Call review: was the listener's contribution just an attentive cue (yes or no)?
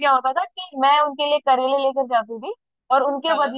yes